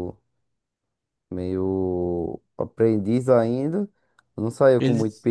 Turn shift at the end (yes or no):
no